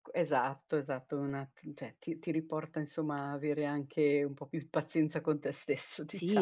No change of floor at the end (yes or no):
no